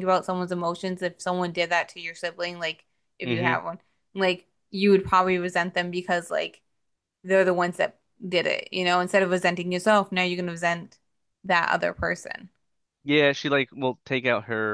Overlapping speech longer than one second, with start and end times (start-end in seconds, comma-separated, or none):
none